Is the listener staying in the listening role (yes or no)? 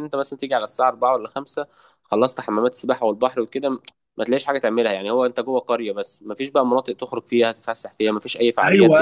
no